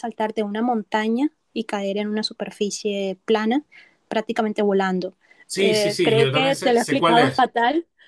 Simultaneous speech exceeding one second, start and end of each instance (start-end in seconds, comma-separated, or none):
5.5-7.5